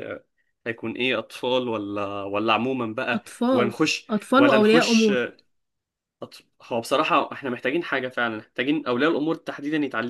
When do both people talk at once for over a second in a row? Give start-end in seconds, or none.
3.1-5.3